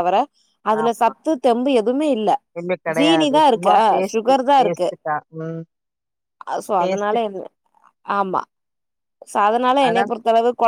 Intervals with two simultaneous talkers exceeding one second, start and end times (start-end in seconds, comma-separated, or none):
3.0-4.9